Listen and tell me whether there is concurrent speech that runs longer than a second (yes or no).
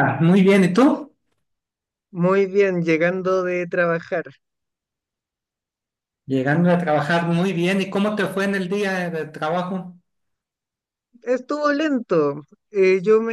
no